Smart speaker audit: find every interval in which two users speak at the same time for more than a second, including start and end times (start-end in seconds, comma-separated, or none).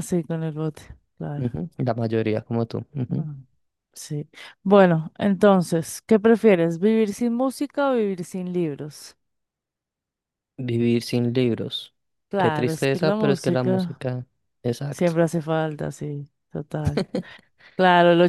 12.4-14.0